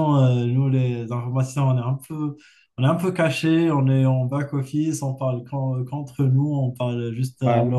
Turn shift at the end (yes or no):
no